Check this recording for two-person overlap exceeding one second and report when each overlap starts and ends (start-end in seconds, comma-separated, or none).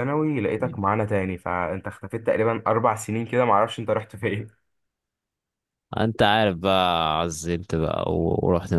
none